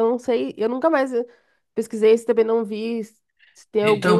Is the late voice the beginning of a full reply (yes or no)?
yes